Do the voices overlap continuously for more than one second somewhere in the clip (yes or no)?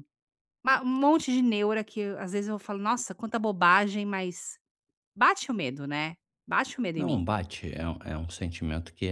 no